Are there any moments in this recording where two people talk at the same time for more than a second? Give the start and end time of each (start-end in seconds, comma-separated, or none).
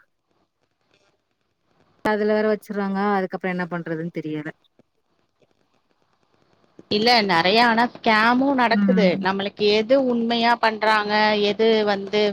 none